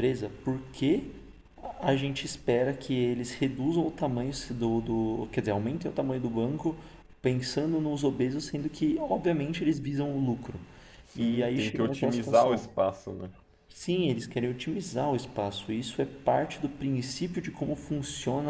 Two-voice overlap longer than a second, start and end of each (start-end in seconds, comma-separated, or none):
11.1-12.7